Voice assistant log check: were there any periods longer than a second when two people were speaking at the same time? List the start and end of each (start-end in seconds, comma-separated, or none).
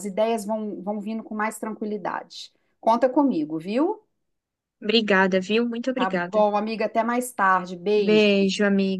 none